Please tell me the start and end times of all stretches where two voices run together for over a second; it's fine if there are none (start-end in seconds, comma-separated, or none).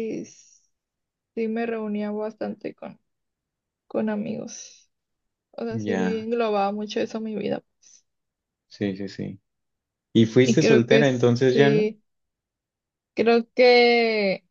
10.4-11.9